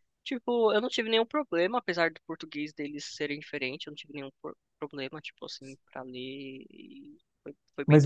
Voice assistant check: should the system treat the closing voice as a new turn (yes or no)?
yes